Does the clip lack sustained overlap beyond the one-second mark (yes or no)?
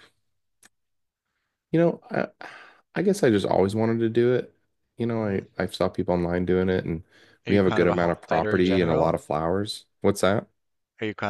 no